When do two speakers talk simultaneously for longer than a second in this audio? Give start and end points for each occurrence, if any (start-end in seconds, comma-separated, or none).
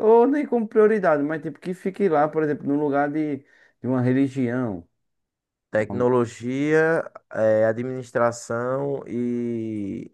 none